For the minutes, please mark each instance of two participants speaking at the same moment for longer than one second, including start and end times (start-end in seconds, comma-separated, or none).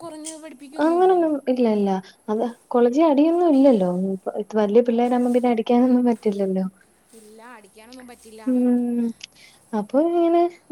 none